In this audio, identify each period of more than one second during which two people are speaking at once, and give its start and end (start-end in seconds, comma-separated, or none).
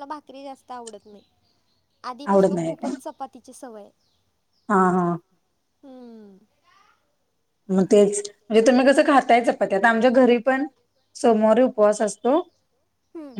none